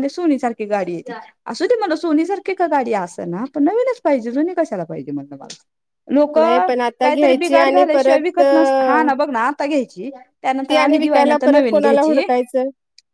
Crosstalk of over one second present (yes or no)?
yes